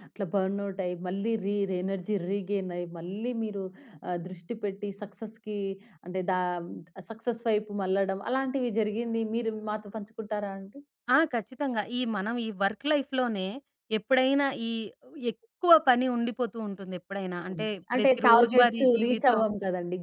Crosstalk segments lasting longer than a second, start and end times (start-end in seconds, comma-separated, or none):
17.4-19.4